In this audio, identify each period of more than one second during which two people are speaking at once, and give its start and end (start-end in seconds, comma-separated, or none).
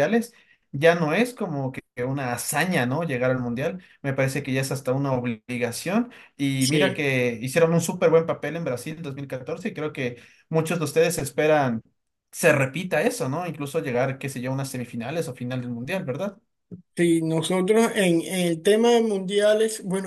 none